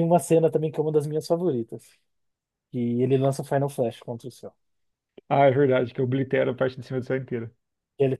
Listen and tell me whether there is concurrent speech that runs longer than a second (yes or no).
no